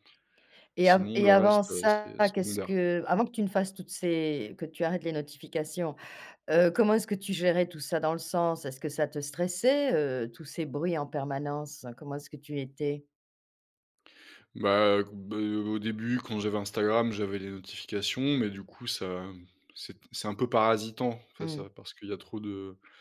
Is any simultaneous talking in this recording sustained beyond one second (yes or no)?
yes